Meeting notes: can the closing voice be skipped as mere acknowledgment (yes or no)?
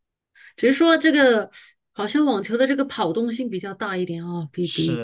no